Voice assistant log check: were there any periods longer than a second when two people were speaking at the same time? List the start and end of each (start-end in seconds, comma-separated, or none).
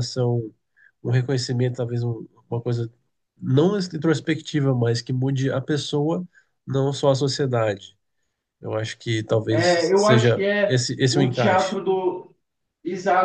9.5-11.8